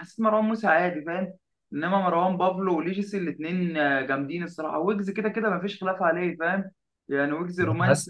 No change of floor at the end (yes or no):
yes